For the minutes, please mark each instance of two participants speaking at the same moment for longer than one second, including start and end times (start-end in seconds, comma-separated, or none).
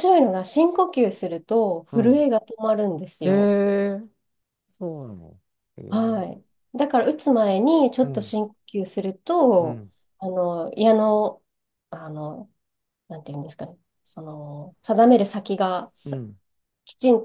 none